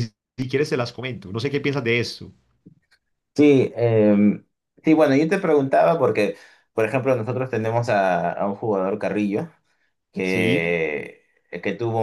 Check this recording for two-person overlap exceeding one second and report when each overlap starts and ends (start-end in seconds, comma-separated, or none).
none